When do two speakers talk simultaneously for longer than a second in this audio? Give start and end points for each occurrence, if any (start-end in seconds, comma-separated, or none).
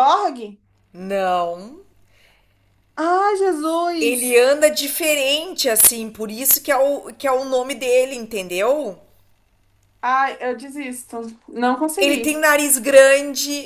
none